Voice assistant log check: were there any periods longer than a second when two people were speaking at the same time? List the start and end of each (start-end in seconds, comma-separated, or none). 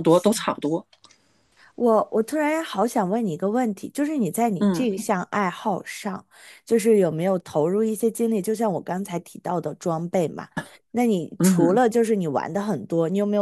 none